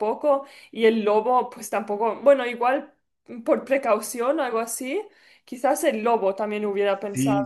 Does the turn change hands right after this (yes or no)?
yes